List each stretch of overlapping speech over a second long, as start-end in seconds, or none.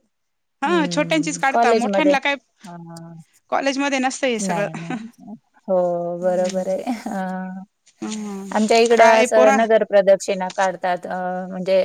0.7-2.1